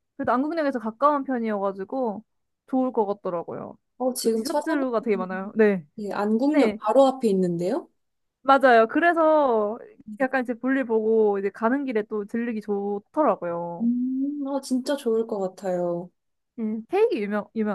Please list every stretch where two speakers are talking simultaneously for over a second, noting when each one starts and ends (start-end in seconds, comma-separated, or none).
4.2-5.5